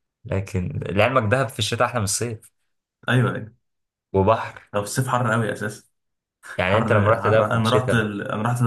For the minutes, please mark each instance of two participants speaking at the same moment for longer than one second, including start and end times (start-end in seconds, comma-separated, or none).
6.7-8.1